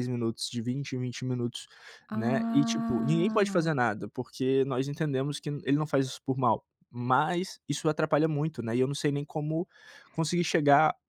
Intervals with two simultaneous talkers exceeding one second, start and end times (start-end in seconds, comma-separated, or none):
2.1-3.6